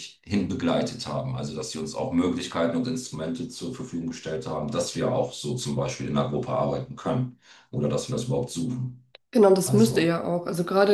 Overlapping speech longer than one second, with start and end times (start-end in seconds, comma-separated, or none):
none